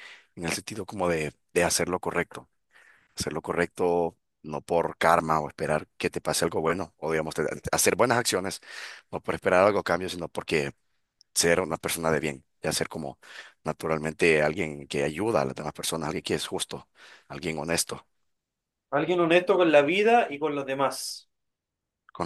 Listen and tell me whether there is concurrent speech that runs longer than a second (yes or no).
no